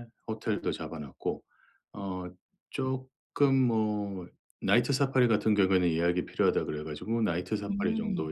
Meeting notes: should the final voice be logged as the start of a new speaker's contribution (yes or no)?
no